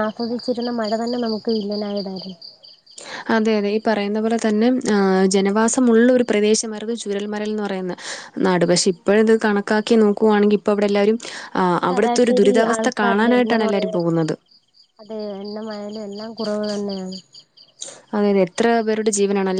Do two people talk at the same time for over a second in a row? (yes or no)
yes